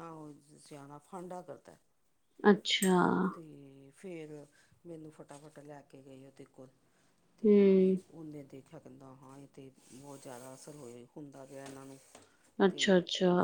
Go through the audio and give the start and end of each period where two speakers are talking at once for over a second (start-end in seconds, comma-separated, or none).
none